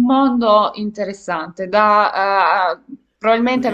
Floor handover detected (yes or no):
yes